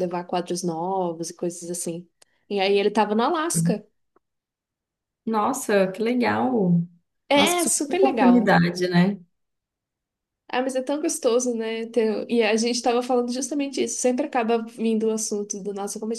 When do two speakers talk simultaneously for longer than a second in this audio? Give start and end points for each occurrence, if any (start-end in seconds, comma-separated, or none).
7.3-8.6